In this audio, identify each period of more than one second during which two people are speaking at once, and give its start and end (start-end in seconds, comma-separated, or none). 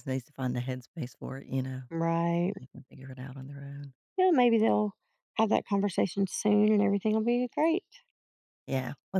none